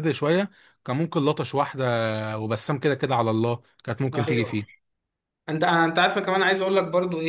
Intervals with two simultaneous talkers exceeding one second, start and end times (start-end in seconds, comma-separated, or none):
none